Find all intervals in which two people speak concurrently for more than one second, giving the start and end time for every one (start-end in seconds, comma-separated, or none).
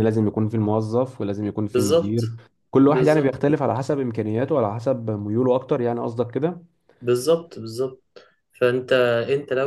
none